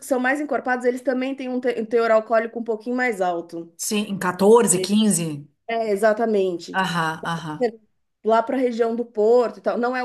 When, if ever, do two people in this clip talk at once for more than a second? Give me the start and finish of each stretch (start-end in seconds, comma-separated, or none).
none